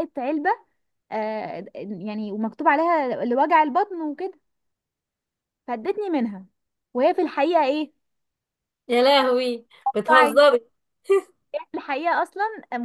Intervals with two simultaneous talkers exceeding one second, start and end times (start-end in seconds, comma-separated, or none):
none